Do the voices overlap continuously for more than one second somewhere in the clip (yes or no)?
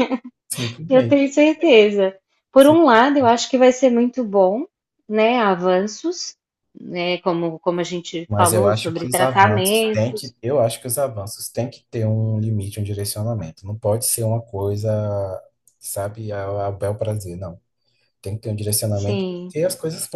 yes